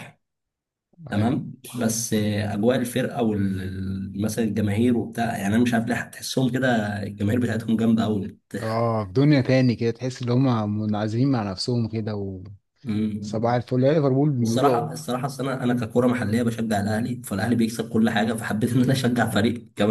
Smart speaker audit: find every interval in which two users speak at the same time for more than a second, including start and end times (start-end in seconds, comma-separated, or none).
none